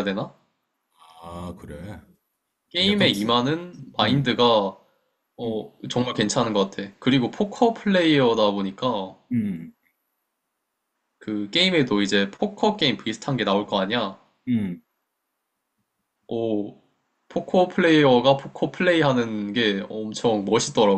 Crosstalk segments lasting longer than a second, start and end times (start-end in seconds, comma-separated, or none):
none